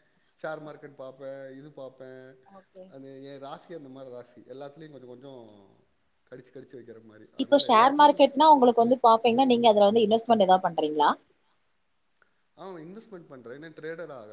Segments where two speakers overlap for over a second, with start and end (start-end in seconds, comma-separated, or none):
7.4-9.2, 9.9-11.1